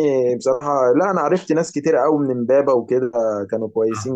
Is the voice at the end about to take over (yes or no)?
yes